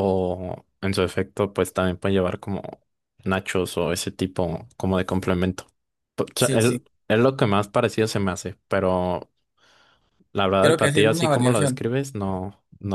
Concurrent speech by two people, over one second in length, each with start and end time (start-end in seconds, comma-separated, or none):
10.6-11.8